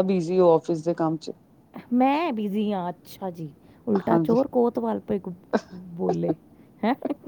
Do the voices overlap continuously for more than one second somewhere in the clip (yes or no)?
no